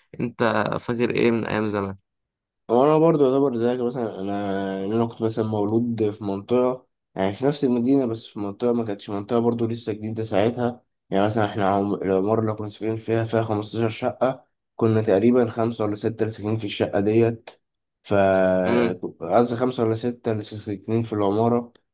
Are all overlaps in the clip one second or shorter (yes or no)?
yes